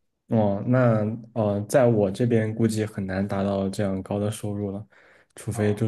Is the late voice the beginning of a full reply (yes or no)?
no